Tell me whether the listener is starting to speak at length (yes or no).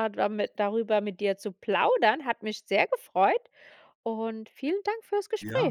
yes